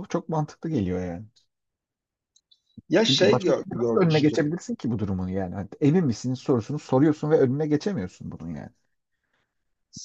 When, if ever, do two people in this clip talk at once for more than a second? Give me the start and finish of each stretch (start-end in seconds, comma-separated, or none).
3.0-4.5